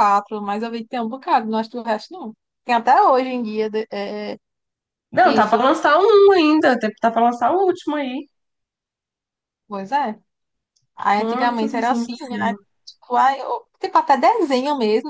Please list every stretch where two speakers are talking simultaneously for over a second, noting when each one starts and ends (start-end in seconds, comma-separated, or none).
11.1-12.6